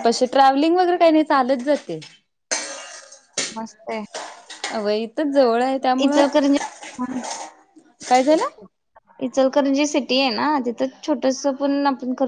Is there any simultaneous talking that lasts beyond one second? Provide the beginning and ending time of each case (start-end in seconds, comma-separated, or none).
none